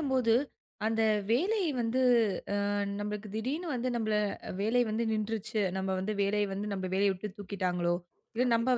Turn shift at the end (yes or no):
no